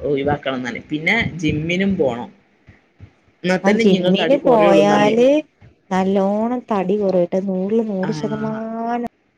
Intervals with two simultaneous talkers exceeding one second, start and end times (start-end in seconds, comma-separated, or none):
3.7-5.2